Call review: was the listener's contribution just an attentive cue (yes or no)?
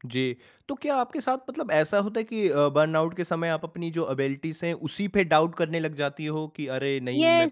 no